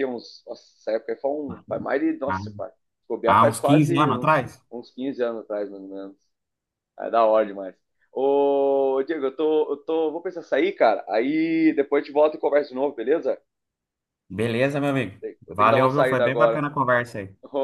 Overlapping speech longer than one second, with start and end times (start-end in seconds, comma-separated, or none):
3.2-4.6, 15.2-16.6